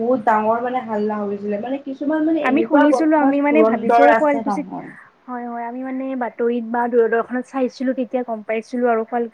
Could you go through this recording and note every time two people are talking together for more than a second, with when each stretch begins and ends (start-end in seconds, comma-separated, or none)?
2.5-4.7